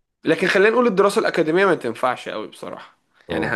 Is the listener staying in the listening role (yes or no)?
yes